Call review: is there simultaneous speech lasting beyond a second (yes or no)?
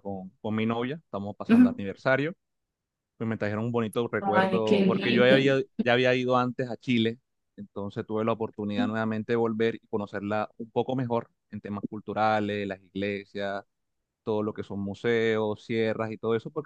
yes